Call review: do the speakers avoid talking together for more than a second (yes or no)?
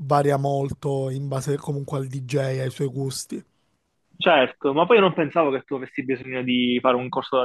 yes